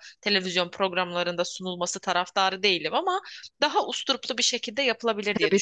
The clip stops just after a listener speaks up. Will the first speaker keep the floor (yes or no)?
no